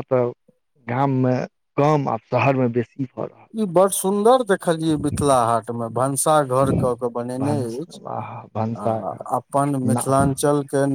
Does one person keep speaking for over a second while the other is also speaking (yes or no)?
no